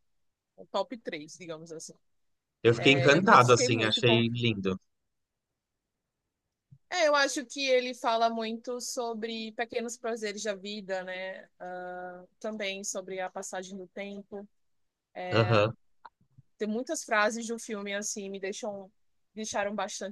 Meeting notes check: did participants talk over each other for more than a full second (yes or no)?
yes